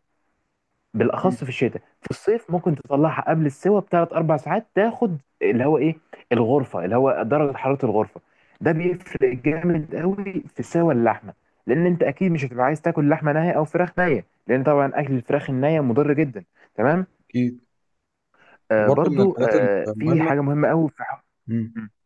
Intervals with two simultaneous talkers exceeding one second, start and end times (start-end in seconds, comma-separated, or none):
18.8-20.3